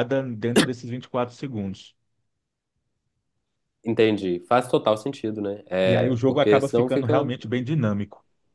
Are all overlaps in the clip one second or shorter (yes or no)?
no